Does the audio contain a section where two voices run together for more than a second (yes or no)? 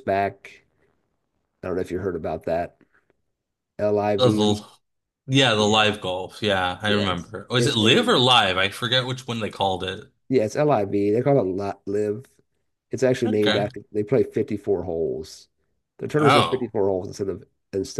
yes